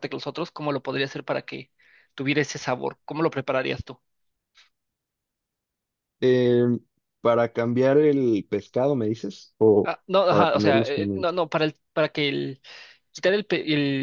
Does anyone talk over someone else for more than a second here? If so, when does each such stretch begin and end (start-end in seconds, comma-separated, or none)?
9.8-11.4